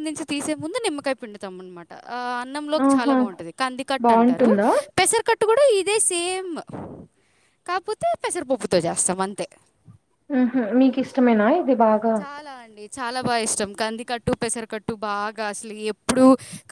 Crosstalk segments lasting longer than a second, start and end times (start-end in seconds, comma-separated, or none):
none